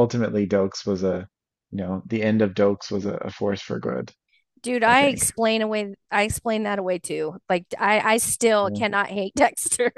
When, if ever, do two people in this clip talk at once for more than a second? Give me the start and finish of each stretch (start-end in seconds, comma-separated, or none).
none